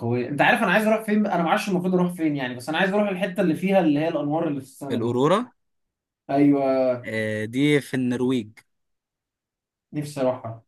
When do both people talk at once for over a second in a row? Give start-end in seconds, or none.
none